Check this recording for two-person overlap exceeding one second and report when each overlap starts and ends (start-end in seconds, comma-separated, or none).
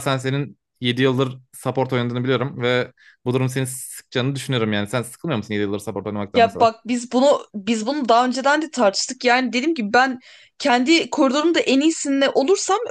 none